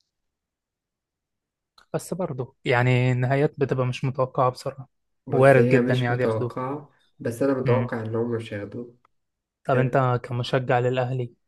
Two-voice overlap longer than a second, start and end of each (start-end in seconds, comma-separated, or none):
5.3-6.6